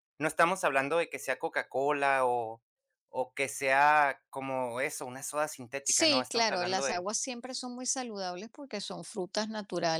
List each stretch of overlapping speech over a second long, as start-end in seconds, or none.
5.8-7.1